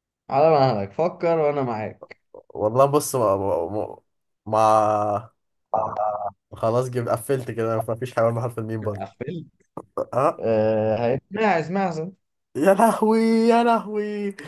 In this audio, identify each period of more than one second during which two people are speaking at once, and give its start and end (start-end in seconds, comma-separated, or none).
none